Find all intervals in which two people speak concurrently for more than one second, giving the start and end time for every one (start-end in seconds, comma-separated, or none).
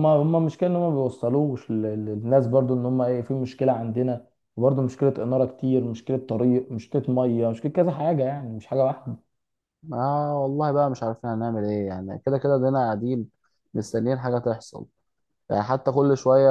none